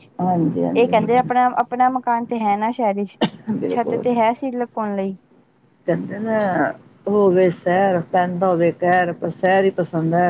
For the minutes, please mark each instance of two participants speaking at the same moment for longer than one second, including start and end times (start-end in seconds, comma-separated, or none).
none